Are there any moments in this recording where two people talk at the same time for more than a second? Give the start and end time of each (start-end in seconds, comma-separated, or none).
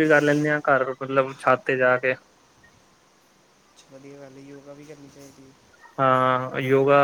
none